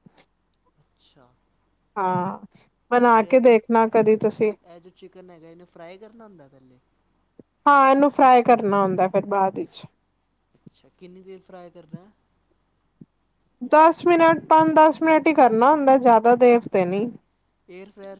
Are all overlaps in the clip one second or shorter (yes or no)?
no